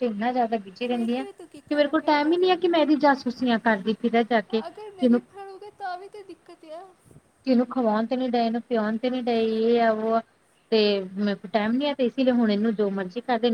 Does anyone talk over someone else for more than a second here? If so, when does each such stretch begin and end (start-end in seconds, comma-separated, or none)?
0.9-2.5